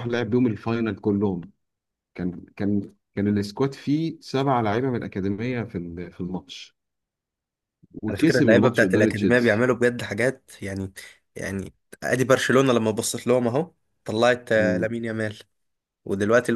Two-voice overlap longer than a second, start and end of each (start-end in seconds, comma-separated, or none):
8.1-9.7